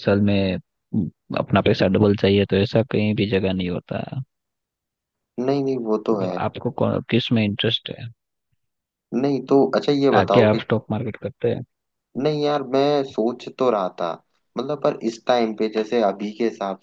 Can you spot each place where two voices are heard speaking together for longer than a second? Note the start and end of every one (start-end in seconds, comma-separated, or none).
none